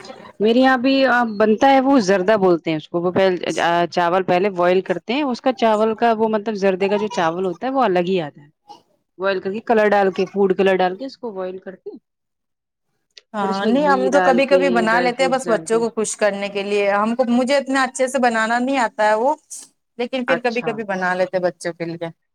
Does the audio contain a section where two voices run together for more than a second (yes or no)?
yes